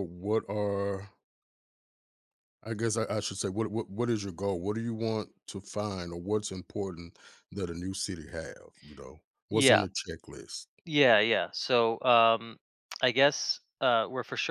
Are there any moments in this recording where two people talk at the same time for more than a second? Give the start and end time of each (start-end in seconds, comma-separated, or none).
none